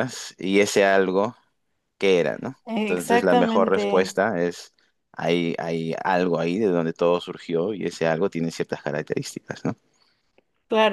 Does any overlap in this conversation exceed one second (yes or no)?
yes